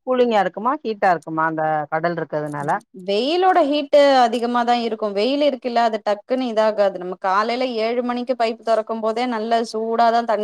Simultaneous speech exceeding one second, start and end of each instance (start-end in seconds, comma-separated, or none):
none